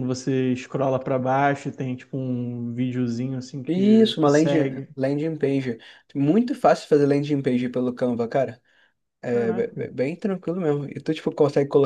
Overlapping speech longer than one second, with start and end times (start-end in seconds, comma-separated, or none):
3.7-4.9